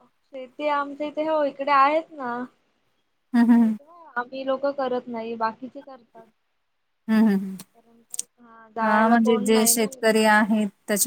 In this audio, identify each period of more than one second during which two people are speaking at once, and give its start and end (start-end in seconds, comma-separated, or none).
8.8-10.2